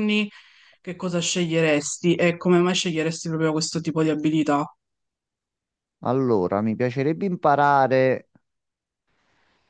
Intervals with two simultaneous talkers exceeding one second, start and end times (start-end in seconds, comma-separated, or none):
none